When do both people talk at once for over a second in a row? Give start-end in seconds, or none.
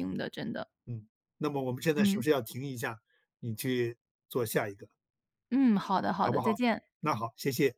none